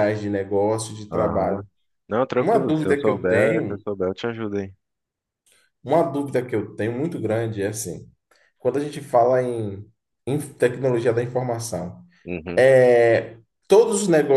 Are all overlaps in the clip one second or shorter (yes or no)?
no